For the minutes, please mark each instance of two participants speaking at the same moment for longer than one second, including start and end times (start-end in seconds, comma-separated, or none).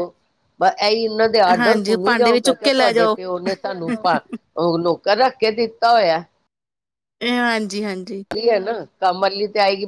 1.6-3.2